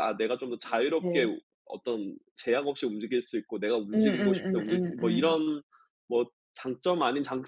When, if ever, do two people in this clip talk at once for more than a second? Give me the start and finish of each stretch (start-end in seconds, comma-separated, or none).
4.0-5.4